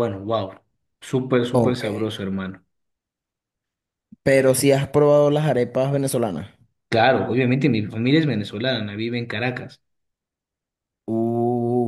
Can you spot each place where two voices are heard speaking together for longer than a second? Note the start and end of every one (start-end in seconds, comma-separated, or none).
none